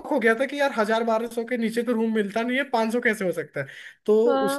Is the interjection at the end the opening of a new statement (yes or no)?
yes